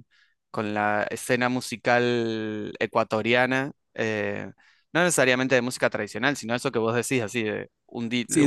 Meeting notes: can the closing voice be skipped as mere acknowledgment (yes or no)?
no